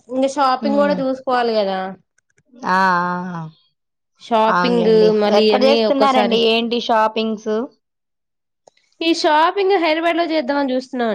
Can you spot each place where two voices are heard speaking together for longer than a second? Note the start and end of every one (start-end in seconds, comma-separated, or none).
4.5-6.4